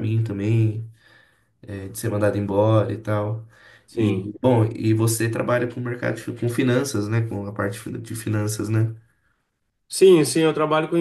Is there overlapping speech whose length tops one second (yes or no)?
no